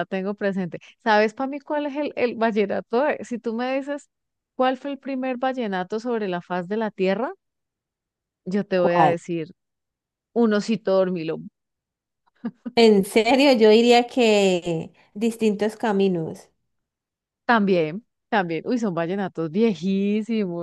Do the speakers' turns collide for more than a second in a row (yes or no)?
no